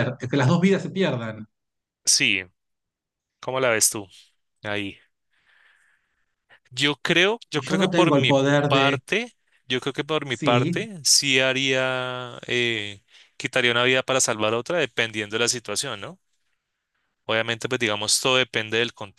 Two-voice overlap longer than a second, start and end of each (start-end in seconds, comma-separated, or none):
7.5-9.0